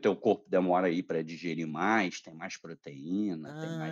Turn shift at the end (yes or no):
yes